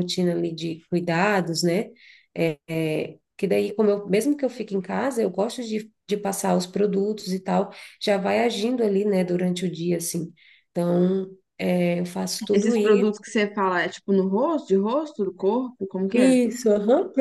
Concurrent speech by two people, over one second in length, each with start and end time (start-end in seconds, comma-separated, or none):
none